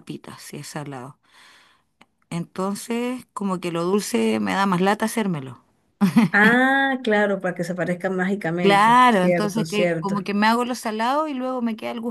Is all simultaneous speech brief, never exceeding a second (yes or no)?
no